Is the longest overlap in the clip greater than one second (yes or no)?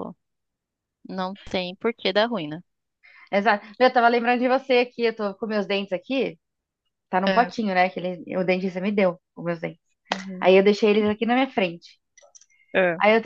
no